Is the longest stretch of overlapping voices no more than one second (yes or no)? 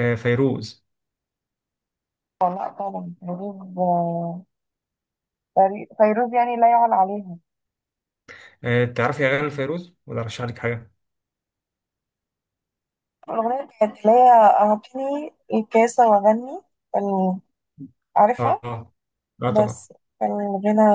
yes